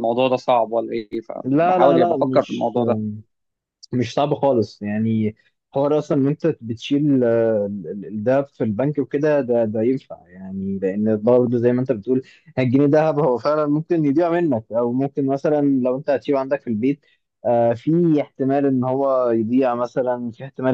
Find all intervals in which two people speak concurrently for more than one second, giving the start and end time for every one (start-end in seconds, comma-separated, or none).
1.4-2.7